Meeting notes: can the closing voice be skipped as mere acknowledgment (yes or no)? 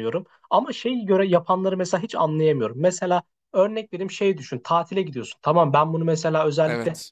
yes